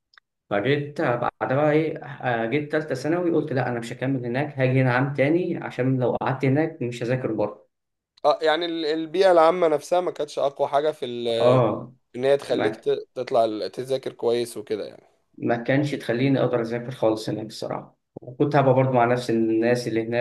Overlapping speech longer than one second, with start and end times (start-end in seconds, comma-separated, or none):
none